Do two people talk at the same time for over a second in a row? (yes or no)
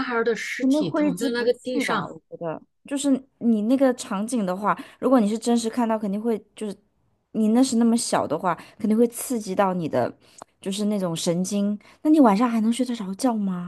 yes